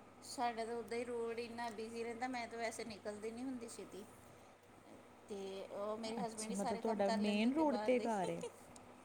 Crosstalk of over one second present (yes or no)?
yes